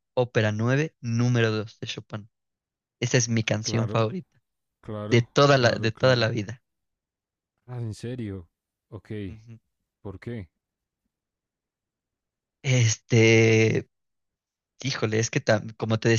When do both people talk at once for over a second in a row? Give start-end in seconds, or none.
5.1-6.3